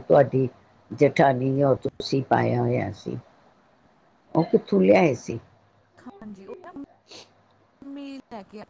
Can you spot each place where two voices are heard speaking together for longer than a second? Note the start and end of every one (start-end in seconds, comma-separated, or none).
none